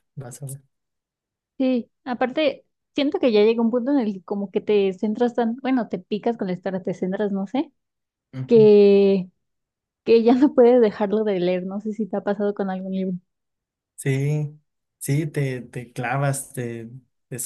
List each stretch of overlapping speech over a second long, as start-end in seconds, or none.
none